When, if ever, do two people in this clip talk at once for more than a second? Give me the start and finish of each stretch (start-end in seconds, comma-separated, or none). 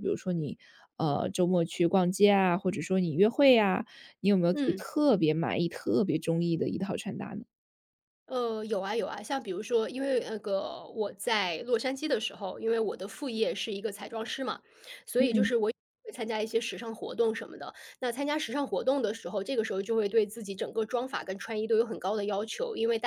none